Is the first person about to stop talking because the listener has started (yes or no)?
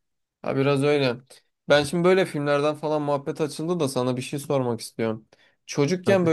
no